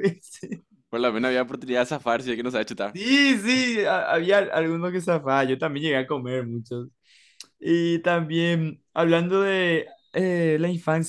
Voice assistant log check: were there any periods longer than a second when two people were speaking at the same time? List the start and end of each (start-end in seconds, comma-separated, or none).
none